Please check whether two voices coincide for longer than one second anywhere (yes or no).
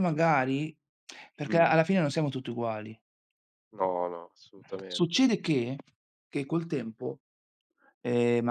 no